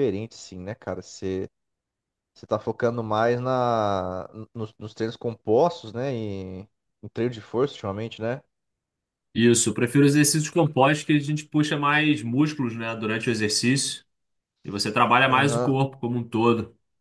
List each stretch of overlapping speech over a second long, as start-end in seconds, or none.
none